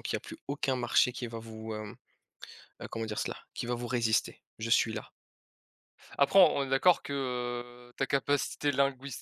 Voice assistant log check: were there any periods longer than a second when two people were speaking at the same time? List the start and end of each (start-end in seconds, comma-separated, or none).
none